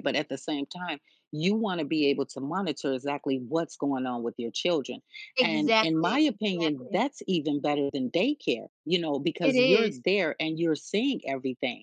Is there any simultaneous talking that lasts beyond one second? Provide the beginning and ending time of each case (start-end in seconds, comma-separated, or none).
5.4-7.0